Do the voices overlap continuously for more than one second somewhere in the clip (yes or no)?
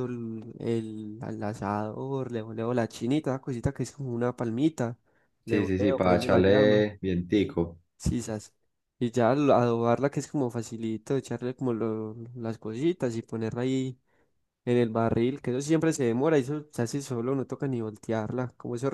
yes